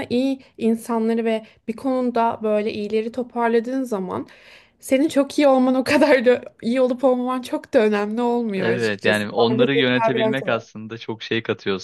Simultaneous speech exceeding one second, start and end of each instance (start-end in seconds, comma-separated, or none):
8.6-10.7